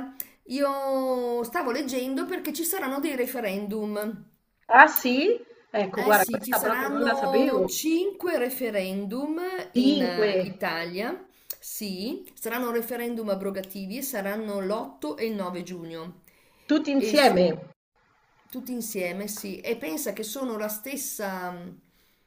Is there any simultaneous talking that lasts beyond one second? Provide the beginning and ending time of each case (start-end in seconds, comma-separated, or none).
5.9-7.8